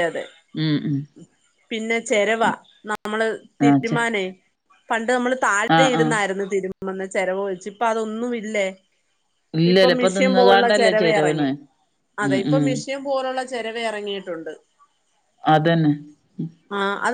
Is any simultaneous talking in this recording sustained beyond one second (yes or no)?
yes